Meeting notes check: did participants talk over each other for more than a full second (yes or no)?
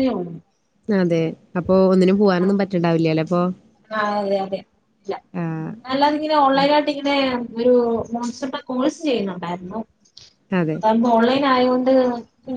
no